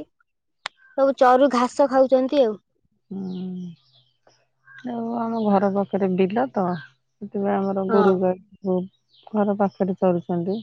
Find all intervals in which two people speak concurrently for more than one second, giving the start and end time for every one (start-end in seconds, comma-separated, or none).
none